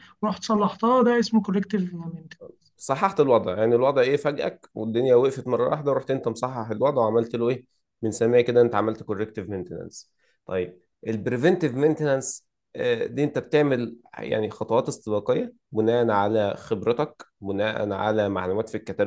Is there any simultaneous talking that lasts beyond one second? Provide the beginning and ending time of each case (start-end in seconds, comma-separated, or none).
none